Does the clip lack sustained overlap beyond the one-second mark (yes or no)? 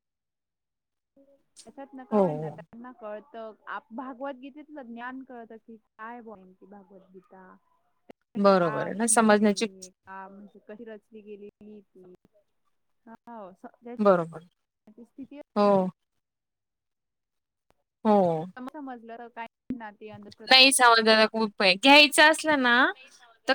no